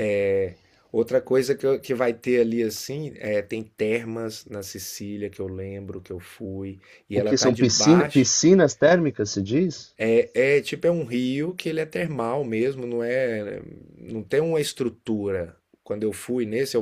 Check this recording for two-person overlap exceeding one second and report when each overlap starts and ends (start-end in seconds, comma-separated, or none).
7.1-8.3